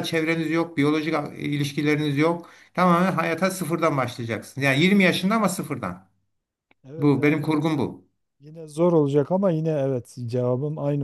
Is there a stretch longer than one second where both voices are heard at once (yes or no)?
no